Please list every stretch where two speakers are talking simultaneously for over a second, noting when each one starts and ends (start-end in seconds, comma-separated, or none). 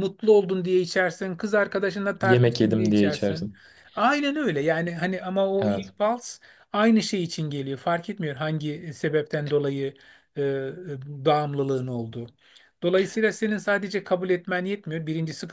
2.2-3.5